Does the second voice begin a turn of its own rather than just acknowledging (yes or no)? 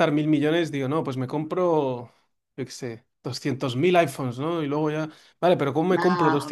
no